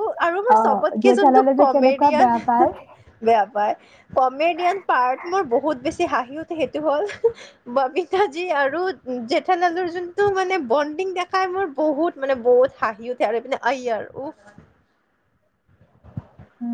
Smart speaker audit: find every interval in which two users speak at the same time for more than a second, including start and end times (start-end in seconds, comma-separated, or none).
0.5-2.7